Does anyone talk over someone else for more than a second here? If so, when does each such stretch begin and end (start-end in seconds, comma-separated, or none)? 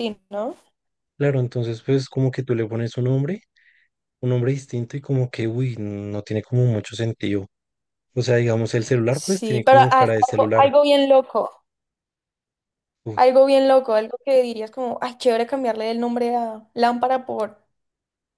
9.1-10.7